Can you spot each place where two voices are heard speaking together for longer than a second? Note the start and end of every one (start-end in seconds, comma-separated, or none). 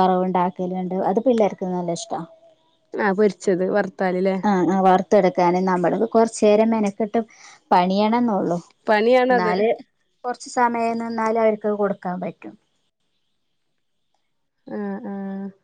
none